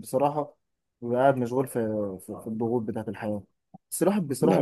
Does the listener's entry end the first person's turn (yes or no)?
no